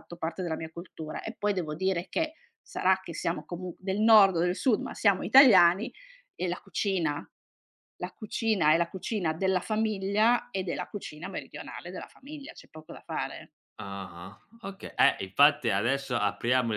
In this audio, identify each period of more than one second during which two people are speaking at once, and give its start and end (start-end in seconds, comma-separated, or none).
none